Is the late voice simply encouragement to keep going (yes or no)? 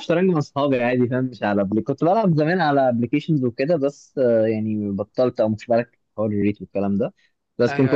yes